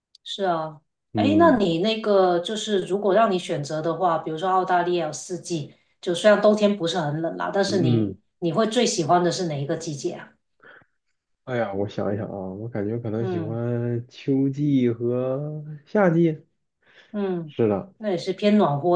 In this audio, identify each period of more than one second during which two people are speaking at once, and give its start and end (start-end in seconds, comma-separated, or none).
none